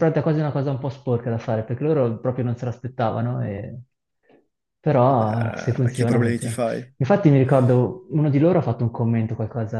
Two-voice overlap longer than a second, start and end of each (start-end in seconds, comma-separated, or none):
5.0-6.6